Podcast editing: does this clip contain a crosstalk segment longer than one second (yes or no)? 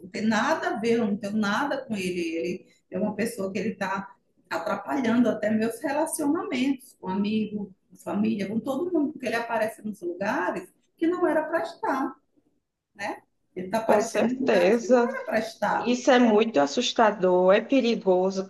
yes